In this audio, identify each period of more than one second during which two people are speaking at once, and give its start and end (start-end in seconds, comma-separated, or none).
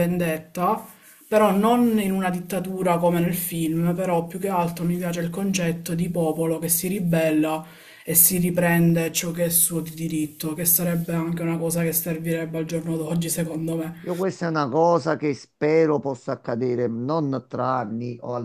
none